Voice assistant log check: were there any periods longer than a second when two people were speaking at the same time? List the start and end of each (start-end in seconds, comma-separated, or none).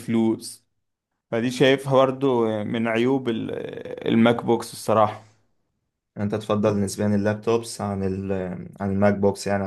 none